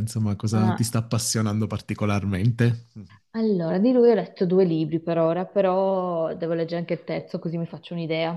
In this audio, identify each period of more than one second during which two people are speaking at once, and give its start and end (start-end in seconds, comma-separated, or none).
none